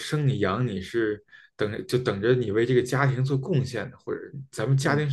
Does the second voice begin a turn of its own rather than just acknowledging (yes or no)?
no